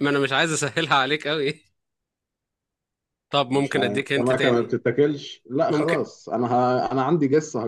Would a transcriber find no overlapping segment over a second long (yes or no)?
no